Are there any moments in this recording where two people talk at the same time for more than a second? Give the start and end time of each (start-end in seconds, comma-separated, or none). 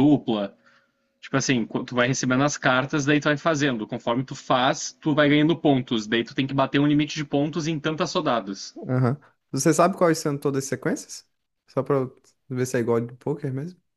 none